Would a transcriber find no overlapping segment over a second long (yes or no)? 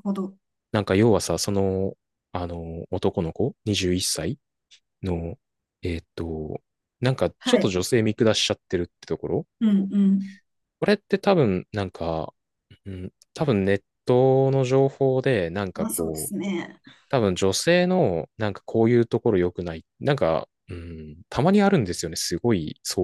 yes